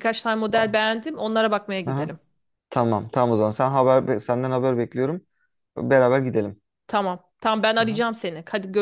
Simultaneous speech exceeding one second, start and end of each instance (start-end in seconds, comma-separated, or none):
none